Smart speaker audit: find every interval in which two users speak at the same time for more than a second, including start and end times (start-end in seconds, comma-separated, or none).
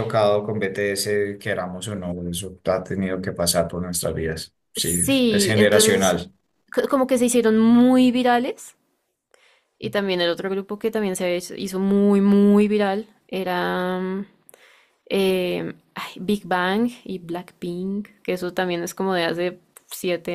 4.8-6.2